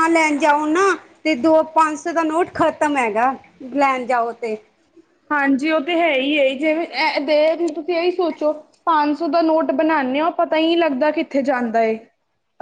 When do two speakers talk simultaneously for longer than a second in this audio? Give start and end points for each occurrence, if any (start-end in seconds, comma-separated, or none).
none